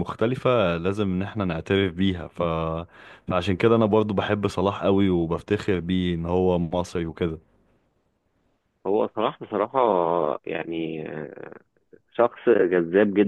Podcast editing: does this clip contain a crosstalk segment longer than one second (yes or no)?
no